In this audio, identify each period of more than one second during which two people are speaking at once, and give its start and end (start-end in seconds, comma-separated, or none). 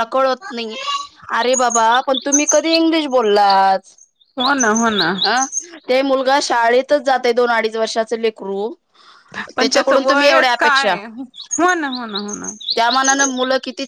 9.6-10.9